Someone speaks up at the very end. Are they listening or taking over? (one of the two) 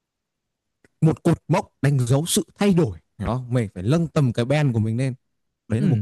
taking over